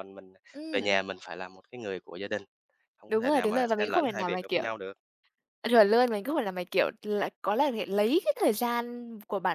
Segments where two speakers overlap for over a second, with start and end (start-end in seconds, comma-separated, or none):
3.1-4.6